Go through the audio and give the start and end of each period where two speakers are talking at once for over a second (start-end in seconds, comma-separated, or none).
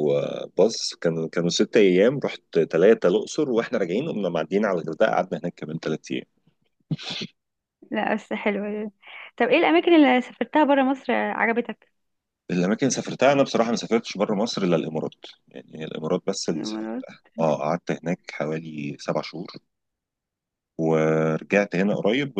none